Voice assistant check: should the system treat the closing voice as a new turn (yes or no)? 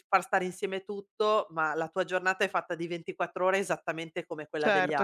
yes